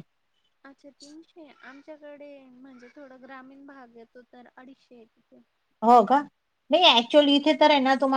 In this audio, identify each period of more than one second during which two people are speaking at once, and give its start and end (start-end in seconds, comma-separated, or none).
none